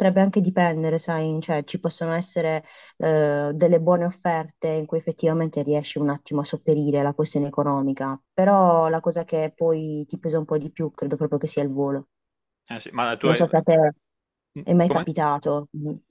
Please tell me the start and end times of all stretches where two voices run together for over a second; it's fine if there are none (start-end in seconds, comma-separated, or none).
none